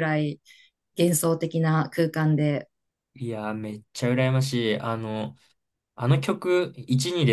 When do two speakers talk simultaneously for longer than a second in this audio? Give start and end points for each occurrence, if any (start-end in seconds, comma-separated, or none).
none